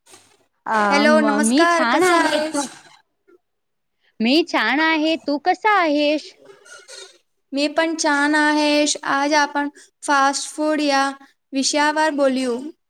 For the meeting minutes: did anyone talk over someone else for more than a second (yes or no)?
yes